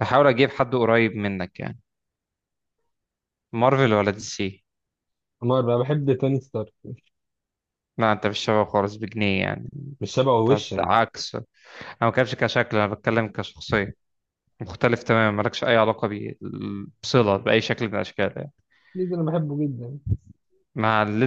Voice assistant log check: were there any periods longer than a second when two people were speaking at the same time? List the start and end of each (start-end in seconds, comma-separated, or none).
none